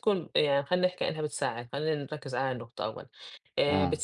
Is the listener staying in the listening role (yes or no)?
yes